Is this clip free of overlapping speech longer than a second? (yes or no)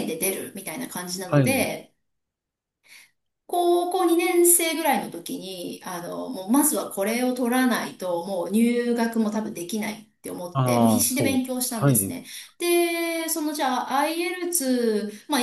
no